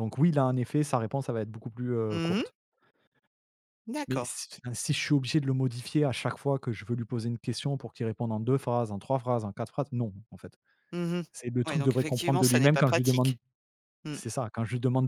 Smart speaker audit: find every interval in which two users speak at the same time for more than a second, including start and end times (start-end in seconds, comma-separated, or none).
11.7-13.4